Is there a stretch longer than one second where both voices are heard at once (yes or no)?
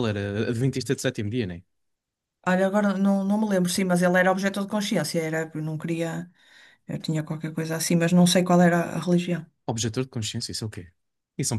no